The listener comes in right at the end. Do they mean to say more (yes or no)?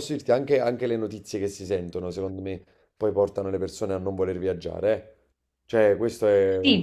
yes